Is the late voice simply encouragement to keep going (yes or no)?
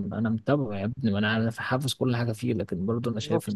yes